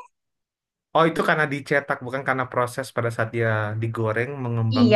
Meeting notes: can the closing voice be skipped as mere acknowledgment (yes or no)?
no